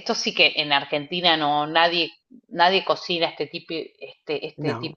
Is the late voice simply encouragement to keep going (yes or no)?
yes